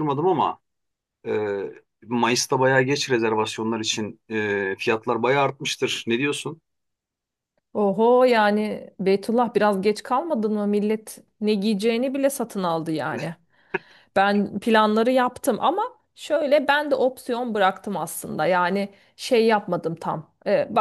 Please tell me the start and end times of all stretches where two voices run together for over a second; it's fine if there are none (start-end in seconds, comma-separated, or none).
none